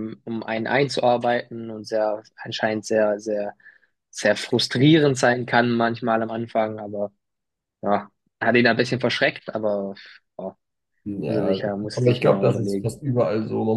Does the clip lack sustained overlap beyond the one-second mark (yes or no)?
no